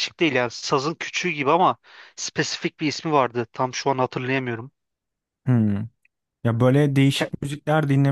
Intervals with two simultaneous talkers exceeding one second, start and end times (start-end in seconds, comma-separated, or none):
none